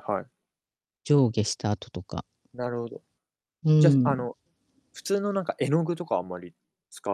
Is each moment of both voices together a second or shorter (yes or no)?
yes